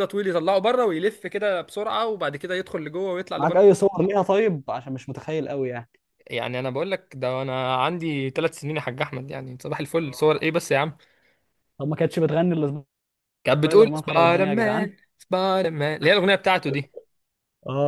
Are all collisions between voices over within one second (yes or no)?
no